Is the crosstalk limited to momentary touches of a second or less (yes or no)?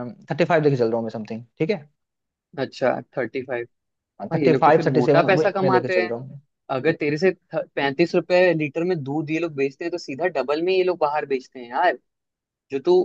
no